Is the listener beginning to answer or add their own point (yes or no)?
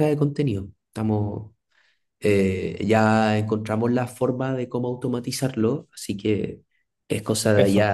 no